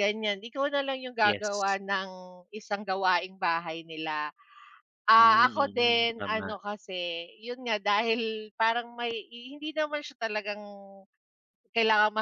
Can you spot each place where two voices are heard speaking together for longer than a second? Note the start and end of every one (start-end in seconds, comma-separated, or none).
5.2-6.5